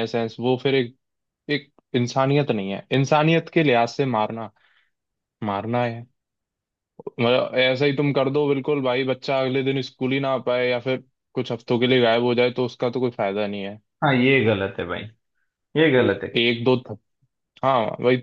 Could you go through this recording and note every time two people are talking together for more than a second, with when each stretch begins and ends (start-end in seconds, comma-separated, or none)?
none